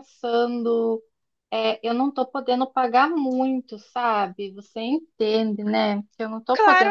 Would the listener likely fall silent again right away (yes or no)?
no